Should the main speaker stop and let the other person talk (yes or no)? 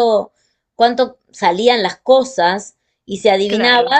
no